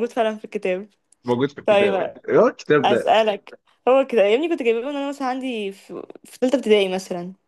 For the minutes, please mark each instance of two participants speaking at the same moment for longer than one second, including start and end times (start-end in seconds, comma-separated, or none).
none